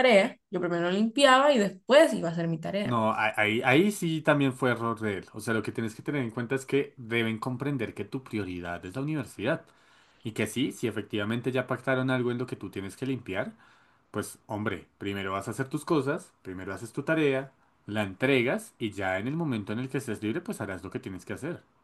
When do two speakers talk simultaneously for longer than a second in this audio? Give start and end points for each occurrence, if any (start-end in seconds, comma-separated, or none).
none